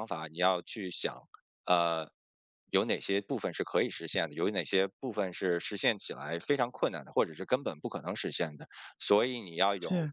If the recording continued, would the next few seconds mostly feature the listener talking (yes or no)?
no